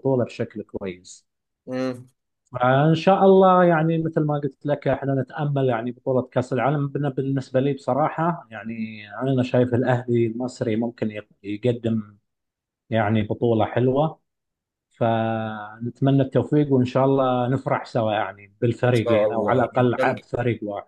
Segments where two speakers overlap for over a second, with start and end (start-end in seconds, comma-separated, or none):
18.9-20.3